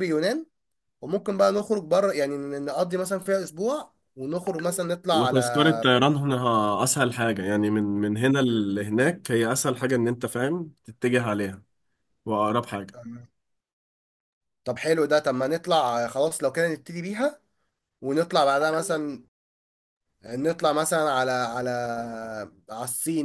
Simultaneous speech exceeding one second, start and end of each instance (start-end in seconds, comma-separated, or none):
none